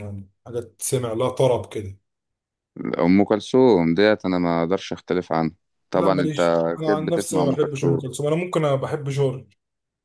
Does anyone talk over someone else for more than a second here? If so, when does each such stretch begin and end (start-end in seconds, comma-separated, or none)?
5.9-8.0